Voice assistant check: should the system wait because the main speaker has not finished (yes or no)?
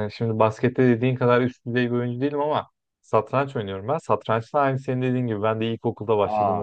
yes